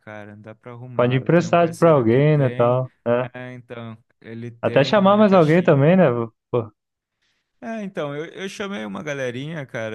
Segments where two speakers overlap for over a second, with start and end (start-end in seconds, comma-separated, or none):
0.9-2.8, 4.6-6.0